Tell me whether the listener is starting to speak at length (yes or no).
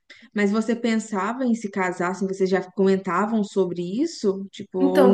yes